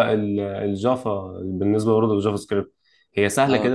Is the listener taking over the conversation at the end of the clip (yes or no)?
no